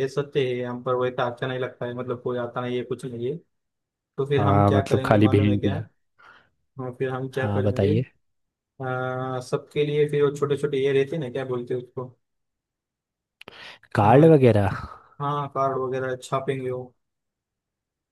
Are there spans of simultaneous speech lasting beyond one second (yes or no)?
yes